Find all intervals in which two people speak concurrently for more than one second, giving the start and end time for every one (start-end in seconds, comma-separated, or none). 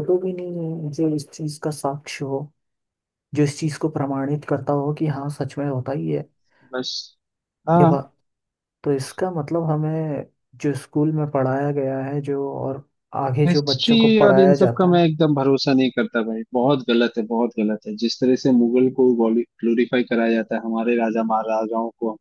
13.5-15.0